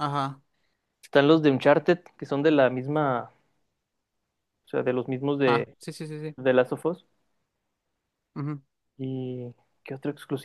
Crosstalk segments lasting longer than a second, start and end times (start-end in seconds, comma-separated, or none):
none